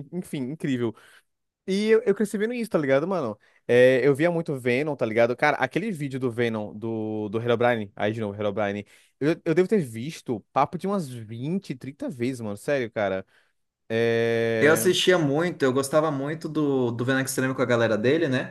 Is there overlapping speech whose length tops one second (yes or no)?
no